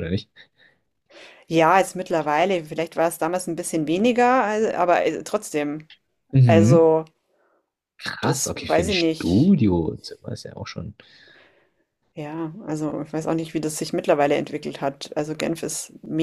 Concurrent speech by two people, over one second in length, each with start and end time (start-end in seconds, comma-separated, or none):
8.2-9.6